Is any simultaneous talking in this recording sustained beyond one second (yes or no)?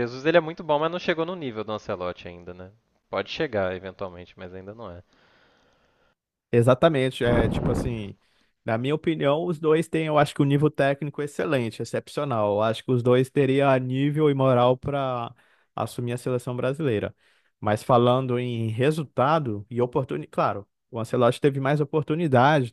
no